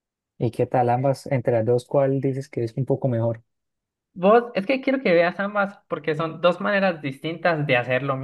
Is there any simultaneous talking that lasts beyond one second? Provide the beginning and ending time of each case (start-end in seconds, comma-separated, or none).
none